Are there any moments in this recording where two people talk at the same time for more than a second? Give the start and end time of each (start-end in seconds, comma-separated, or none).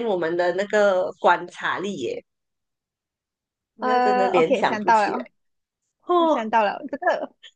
3.8-5.2